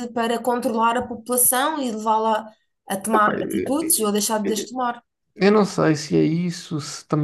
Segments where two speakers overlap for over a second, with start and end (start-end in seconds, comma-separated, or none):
3.1-4.7